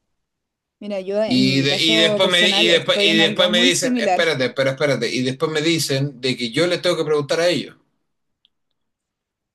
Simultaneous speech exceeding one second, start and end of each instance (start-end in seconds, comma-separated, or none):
1.2-4.2